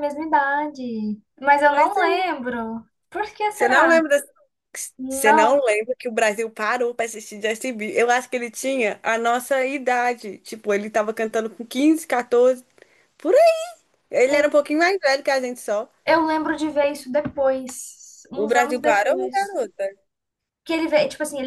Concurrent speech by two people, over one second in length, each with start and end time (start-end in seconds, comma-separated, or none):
18.3-19.6